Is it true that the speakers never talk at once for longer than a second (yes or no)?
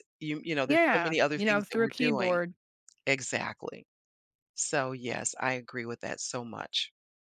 no